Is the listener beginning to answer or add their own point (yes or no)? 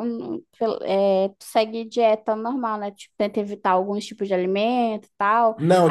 yes